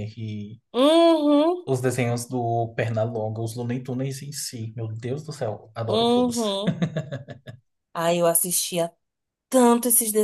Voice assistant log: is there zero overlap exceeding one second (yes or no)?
yes